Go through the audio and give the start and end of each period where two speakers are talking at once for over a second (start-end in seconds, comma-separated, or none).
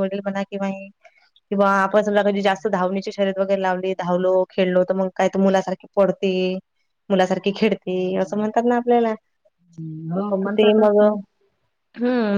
none